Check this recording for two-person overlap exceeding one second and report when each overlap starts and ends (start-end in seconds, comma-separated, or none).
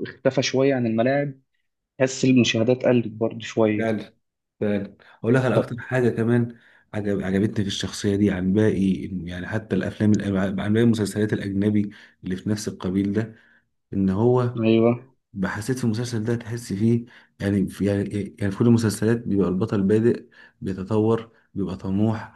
none